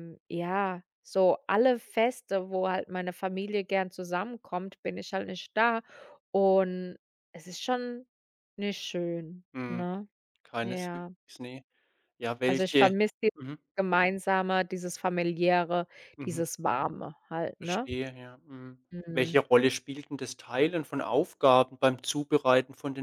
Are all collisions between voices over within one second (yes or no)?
yes